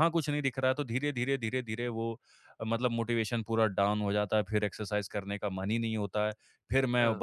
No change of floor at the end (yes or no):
yes